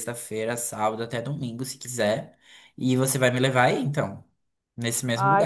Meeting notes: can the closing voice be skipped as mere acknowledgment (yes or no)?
no